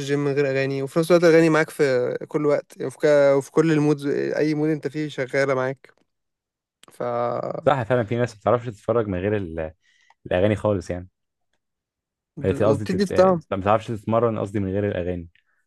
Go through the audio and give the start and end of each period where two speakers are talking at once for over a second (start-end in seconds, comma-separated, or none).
none